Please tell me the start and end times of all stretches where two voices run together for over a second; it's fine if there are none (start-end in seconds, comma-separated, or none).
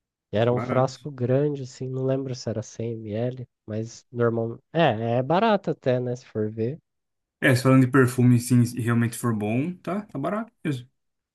none